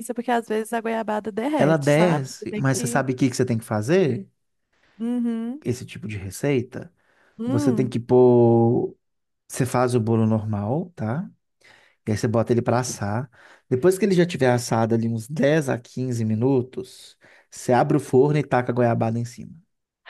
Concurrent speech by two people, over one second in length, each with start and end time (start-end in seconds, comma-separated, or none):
1.6-3.0